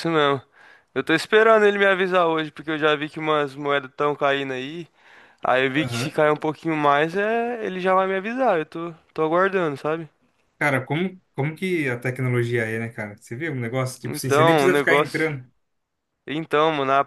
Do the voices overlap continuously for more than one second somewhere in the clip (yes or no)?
yes